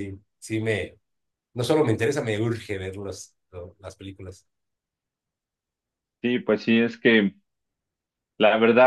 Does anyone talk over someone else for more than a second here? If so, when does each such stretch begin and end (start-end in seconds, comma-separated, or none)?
none